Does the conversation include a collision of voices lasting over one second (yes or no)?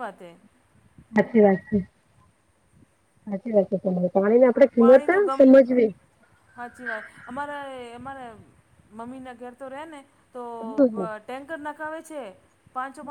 no